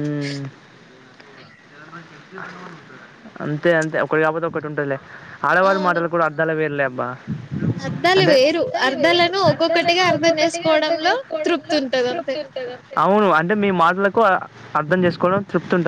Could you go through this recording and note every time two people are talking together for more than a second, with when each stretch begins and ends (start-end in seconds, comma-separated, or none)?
8.2-12.3